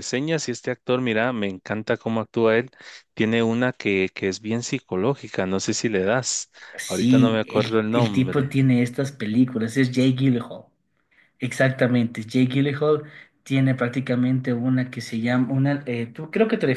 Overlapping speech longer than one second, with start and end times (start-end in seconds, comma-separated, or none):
6.9-8.6